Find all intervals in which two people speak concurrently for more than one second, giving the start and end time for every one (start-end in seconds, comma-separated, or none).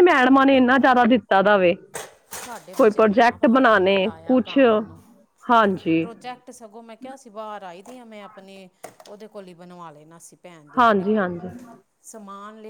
2.7-4.6